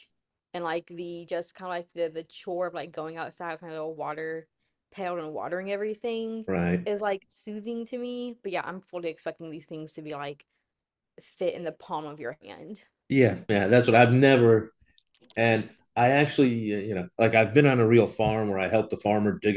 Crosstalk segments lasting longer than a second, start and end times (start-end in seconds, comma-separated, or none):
none